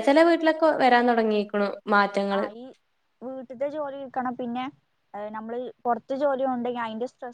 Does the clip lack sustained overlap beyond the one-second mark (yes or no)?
yes